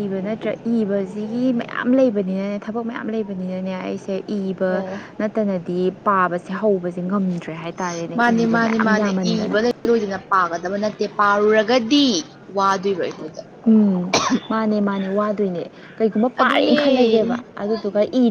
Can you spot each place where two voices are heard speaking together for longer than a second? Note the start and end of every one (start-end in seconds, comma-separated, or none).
none